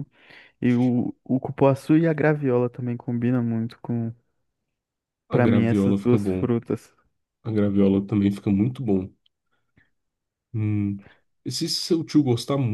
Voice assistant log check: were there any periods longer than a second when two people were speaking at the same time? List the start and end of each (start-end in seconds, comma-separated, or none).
5.3-6.5